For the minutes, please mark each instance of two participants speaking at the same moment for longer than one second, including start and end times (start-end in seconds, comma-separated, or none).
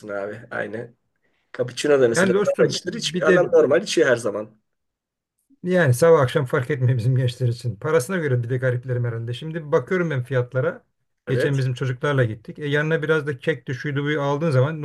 2.1-3.4